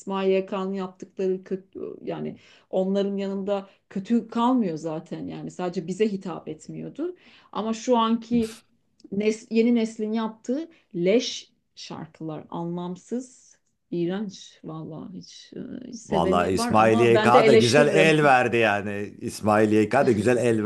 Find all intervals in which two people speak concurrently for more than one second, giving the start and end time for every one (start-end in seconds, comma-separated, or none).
16.1-18.2